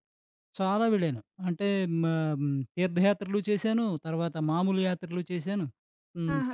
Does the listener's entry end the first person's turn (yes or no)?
yes